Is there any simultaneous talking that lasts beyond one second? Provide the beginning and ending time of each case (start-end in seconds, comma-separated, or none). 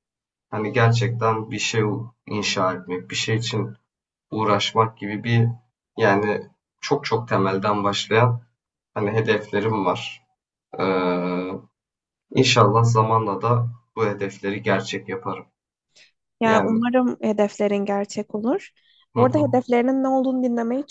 none